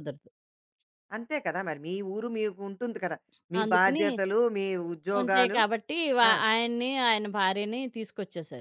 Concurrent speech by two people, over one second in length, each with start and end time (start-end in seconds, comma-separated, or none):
none